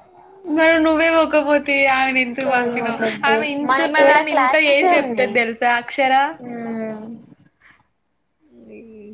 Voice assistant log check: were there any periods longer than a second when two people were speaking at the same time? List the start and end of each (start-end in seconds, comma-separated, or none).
2.4-5.3